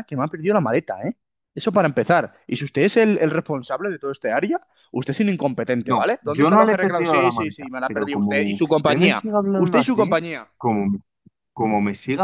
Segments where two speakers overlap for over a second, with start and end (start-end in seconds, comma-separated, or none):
5.8-10.2